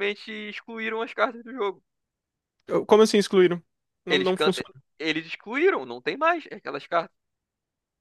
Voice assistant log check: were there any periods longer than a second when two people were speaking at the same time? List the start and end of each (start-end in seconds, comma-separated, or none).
none